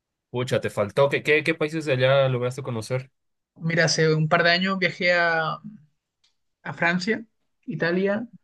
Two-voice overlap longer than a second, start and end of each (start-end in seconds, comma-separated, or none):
none